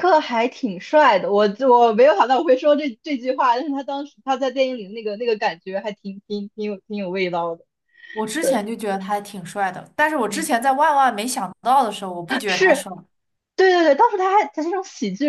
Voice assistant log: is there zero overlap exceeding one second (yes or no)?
yes